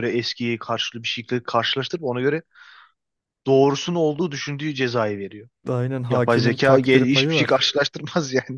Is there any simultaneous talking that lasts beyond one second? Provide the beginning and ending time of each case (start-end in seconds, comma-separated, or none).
6.1-7.6